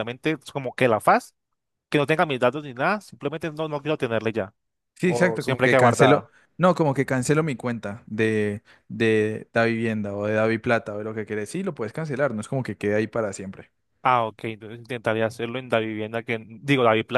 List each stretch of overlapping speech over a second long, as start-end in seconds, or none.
5.0-6.3